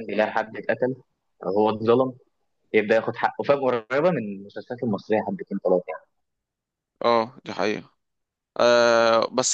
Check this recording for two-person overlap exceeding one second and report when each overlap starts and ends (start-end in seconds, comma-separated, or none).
none